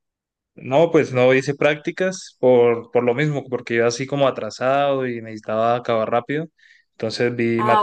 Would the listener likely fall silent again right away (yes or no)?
yes